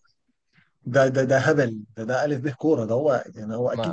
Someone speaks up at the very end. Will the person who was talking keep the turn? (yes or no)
no